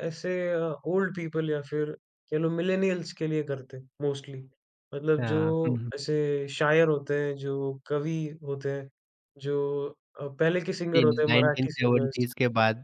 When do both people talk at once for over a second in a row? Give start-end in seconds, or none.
10.9-12.3